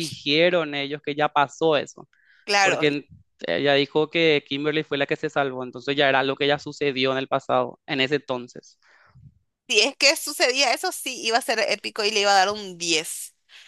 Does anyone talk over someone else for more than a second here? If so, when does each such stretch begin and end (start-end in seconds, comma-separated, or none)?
none